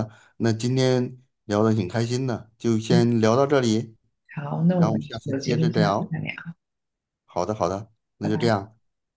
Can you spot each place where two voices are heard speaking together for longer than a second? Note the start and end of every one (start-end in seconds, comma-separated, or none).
4.7-6.2